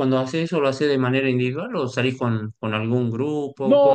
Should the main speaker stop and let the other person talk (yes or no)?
yes